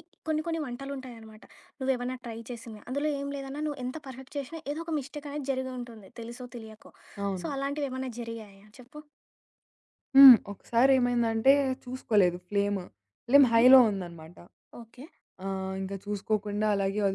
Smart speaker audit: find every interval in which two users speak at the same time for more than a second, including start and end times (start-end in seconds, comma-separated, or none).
none